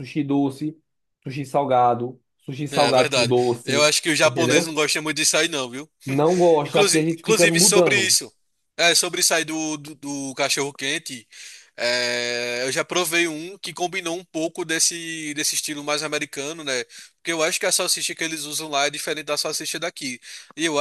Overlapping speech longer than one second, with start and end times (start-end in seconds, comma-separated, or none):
2.7-4.8, 6.6-8.2